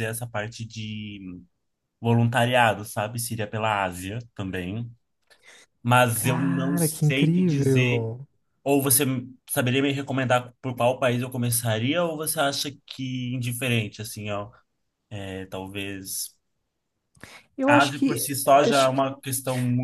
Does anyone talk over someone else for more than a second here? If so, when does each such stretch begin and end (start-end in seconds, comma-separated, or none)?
6.1-8.1, 17.7-19.1